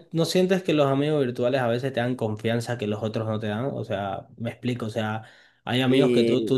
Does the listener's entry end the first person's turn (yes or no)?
no